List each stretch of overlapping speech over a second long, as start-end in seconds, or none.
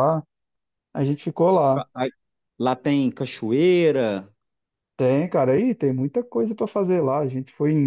none